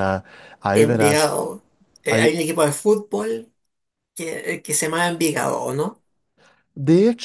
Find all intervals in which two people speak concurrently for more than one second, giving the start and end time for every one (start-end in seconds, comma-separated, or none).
none